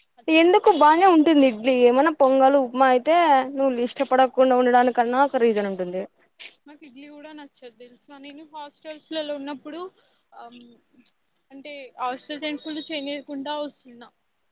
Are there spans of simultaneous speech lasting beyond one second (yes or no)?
no